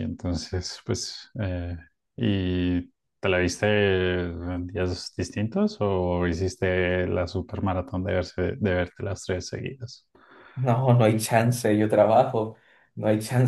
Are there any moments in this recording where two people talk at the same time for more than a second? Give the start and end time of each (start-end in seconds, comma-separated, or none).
none